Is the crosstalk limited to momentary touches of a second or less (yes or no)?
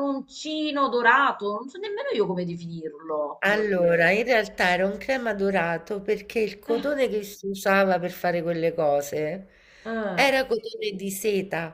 yes